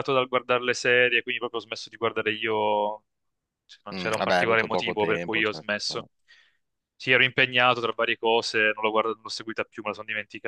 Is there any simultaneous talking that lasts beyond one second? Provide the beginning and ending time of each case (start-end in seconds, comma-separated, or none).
3.9-6.1